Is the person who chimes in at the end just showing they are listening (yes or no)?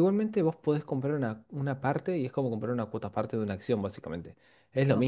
yes